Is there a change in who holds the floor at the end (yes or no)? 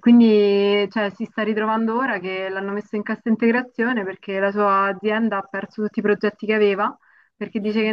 no